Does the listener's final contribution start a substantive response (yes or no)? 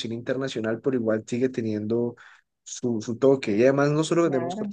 no